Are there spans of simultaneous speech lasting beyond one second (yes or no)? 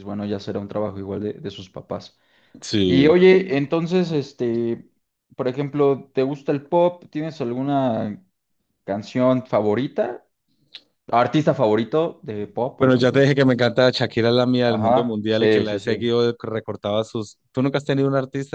yes